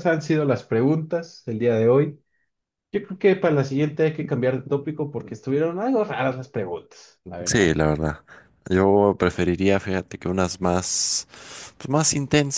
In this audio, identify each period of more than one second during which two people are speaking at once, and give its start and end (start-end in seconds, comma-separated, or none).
none